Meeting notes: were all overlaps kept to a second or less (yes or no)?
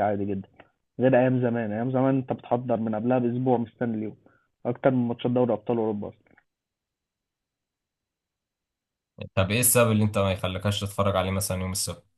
yes